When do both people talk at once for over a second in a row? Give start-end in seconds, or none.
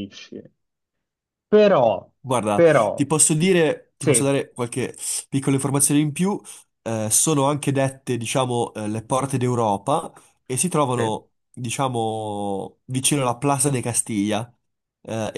none